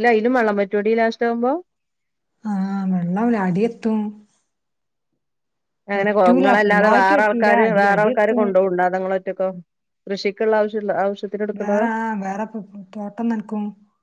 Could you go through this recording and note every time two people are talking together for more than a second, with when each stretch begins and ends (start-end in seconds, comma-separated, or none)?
6.6-8.4